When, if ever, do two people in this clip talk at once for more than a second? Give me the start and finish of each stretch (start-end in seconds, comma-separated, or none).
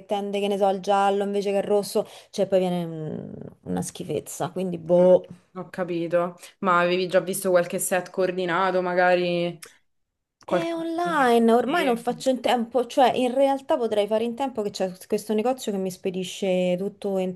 none